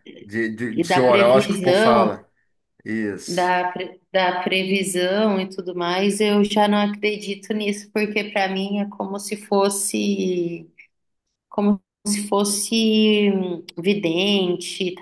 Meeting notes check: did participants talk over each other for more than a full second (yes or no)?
yes